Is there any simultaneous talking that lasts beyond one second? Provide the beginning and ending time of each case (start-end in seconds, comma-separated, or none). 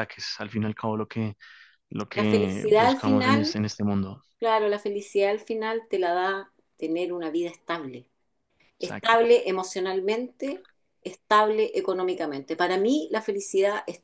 2.1-3.6